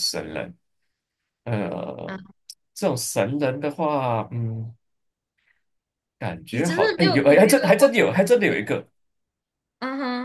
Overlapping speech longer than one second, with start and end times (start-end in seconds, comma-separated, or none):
6.5-7.9